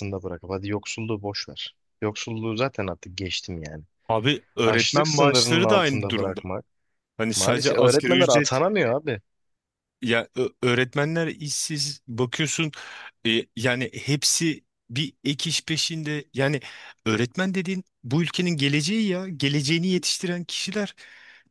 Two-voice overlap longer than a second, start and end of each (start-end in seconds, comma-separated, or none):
4.7-6.4, 7.3-8.6